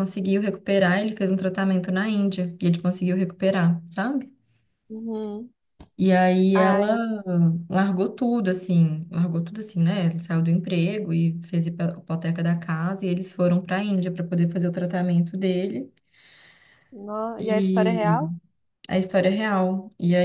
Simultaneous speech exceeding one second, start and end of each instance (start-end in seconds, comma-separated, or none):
none